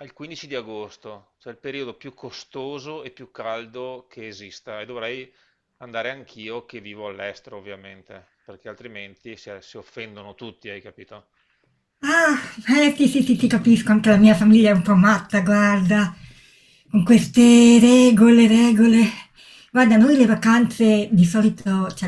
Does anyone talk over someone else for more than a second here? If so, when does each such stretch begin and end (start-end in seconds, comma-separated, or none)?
none